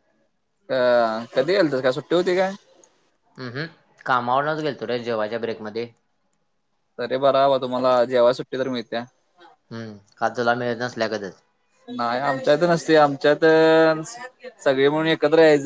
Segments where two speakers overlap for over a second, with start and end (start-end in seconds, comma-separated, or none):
none